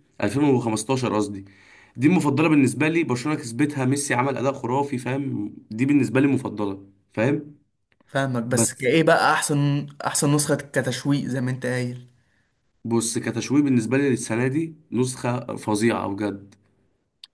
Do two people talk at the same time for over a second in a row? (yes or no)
no